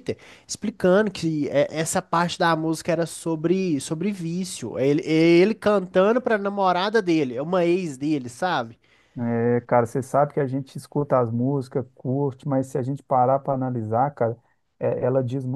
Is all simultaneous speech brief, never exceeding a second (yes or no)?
yes